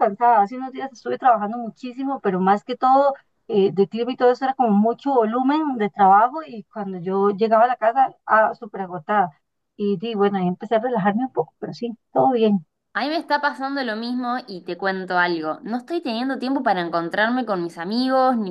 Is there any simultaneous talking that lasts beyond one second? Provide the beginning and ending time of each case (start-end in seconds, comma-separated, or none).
none